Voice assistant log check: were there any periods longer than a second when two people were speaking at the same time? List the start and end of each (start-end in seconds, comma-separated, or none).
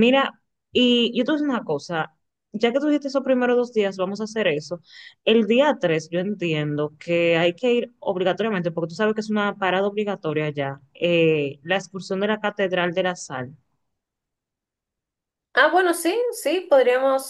none